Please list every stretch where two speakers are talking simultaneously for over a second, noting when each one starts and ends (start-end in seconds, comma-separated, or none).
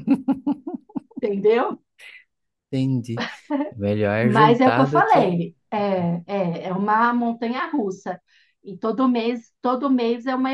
4.2-5.5